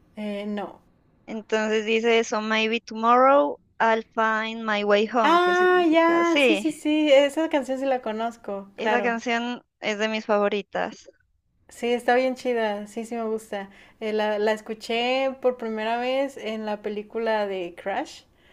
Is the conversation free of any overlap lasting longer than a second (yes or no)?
no